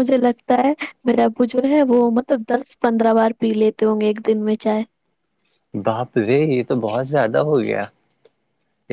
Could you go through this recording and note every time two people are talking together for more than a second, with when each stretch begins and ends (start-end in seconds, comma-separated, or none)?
none